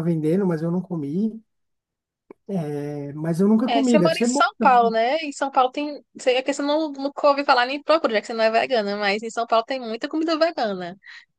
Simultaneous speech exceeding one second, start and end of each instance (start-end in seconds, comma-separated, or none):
3.7-5.0